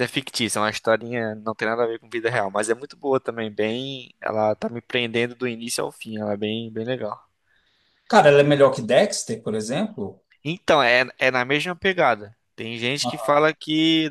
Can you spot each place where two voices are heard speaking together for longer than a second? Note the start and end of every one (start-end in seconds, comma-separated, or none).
none